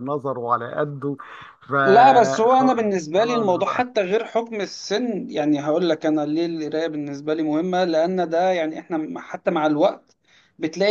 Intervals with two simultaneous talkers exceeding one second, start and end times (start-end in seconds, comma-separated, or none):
2.5-3.9